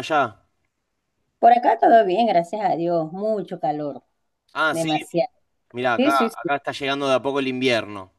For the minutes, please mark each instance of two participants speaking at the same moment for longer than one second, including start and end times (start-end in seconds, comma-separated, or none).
none